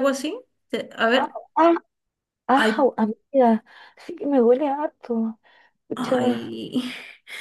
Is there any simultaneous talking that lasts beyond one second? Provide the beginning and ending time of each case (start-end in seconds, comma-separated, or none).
none